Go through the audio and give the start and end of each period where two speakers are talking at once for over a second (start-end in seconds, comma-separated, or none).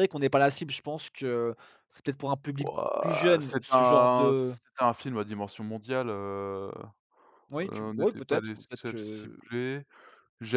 2.6-4.5, 7.6-9.4